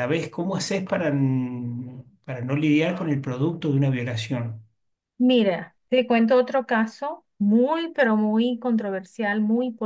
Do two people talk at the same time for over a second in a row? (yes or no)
no